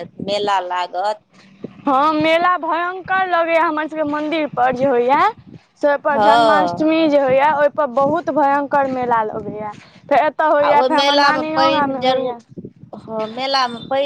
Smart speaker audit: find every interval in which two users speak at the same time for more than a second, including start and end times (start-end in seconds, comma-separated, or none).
10.7-12.3